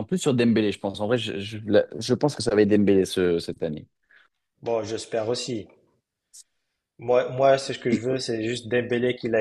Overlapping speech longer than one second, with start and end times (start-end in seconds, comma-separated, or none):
none